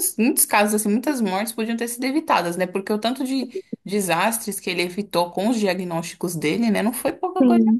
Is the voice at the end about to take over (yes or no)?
yes